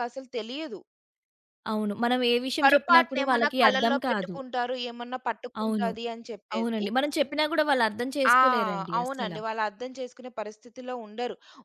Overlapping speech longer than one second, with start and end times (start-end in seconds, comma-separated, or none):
2.6-4.3